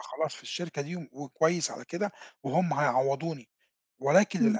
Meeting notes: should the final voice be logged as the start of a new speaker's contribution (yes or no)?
no